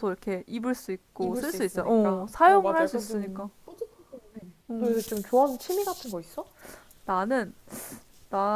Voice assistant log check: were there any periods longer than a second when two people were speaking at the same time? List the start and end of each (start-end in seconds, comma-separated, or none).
1.2-3.5